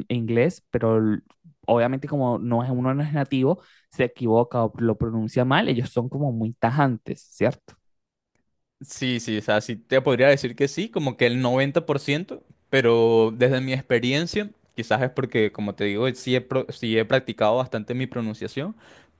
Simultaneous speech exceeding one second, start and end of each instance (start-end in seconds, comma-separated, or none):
none